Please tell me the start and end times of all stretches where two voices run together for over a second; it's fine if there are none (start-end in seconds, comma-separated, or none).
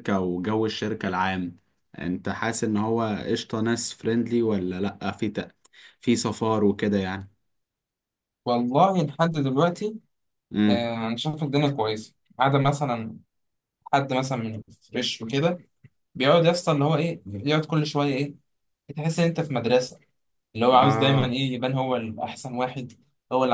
none